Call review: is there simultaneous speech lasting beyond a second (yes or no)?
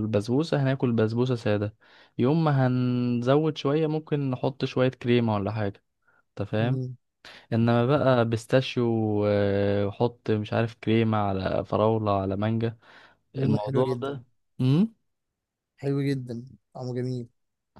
no